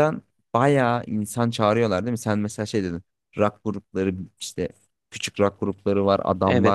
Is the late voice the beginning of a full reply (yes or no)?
yes